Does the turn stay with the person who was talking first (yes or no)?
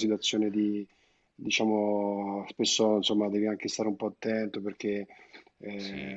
yes